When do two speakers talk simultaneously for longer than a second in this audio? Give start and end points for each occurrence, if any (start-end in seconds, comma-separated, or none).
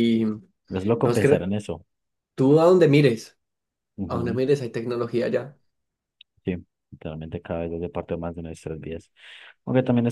none